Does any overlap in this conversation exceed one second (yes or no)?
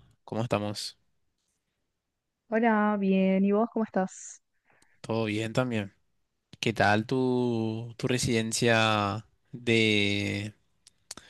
no